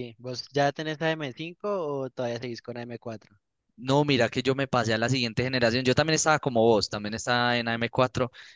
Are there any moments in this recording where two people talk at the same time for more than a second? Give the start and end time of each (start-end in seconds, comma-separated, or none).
none